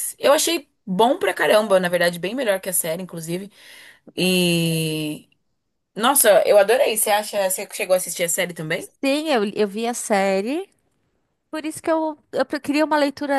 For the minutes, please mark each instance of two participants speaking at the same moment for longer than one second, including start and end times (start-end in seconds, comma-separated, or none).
none